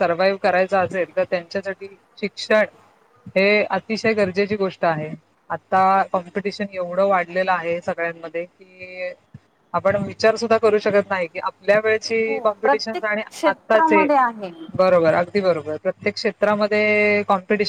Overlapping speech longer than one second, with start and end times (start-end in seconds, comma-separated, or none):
12.2-14.1